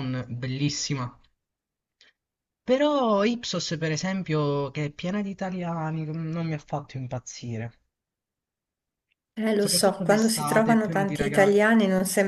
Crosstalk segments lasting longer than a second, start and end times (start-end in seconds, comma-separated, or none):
9.6-11.6